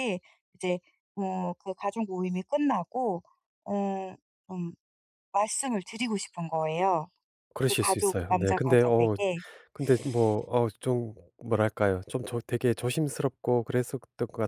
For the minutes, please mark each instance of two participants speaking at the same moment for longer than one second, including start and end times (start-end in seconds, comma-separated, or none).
7.7-9.2